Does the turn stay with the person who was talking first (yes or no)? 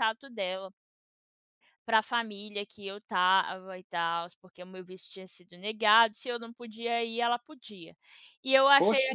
yes